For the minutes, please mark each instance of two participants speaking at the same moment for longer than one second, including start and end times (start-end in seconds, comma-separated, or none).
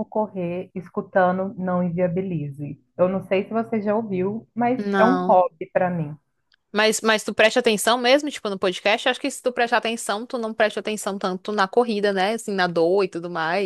none